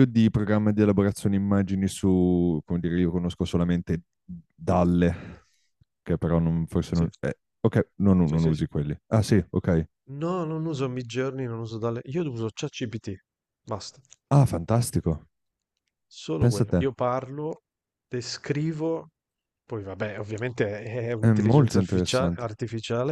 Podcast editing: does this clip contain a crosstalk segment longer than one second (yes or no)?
yes